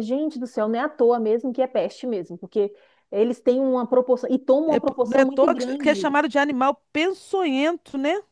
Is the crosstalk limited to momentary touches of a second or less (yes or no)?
no